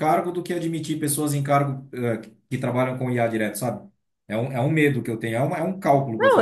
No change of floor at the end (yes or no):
no